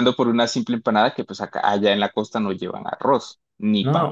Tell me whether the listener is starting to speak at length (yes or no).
yes